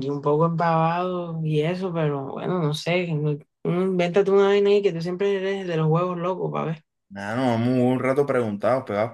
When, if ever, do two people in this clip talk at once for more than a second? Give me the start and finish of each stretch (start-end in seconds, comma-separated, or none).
none